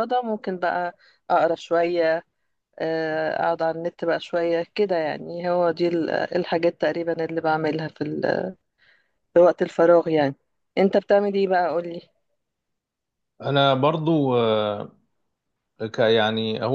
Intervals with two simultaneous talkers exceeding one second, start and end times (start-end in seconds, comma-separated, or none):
none